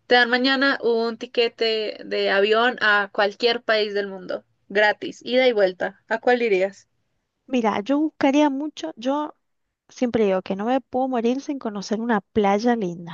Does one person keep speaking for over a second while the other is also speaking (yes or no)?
no